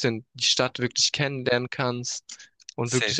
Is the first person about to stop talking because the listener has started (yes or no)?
no